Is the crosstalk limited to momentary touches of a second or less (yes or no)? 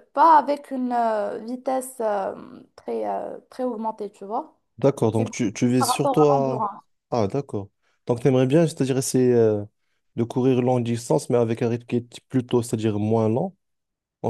no